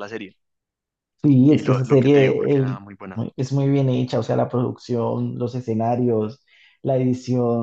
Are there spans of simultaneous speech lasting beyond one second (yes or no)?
yes